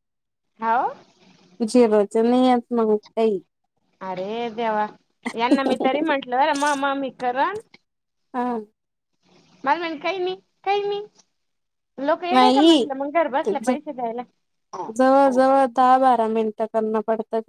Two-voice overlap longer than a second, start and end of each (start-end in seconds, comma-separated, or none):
none